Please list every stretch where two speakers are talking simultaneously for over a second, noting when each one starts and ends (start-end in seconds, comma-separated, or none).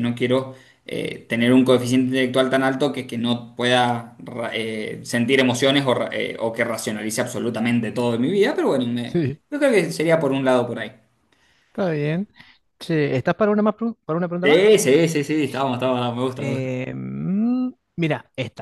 none